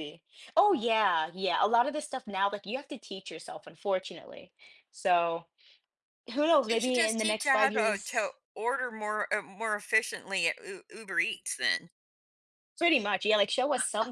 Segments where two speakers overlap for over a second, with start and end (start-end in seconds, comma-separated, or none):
6.7-8.3